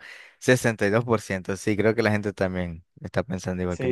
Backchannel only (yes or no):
no